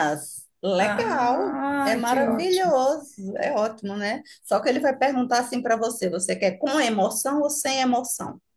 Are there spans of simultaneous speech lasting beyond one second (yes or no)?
yes